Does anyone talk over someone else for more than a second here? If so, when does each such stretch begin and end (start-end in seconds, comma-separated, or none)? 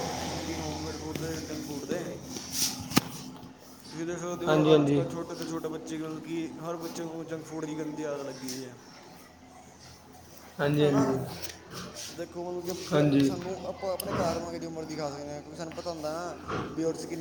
none